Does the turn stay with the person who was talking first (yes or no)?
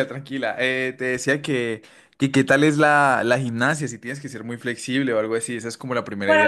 no